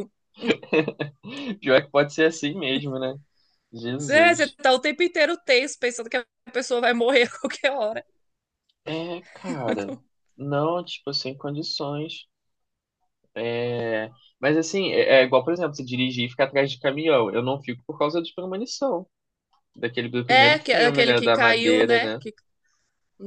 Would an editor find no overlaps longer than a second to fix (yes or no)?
no